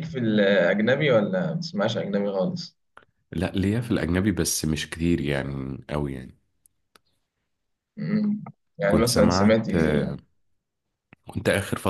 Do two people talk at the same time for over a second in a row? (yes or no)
yes